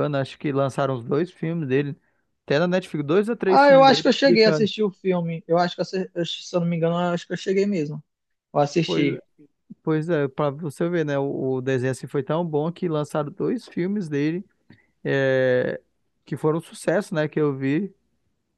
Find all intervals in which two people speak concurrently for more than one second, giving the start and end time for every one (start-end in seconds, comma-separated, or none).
3.5-4.7